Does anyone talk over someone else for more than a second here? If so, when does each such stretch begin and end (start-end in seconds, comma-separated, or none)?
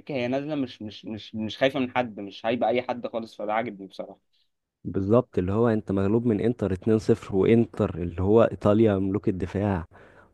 none